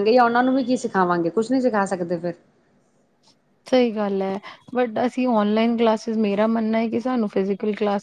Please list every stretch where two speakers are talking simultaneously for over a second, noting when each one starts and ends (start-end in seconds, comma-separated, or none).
none